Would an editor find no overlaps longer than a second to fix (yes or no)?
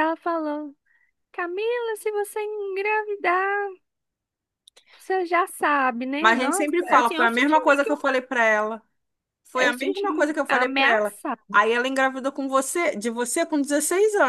no